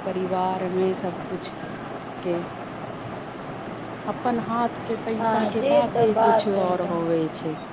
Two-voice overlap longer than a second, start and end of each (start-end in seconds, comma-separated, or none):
5.2-7.0